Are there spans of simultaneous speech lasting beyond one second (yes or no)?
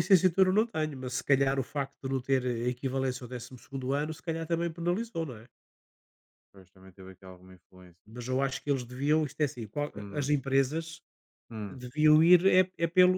no